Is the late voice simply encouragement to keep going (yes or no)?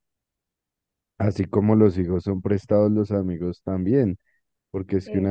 yes